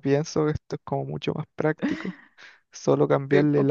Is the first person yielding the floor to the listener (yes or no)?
no